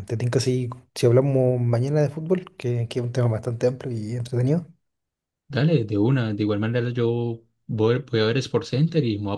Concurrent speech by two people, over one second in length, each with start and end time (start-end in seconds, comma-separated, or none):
none